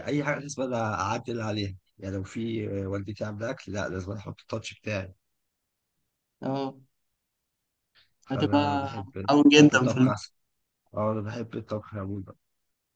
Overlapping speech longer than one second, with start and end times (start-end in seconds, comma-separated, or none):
8.3-10.2